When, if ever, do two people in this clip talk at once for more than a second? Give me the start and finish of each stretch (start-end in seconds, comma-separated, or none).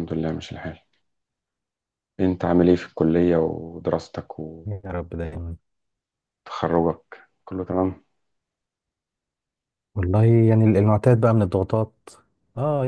none